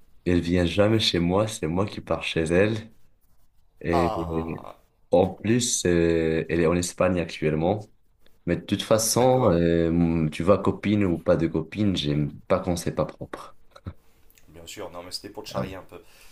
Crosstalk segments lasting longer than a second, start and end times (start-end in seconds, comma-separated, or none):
none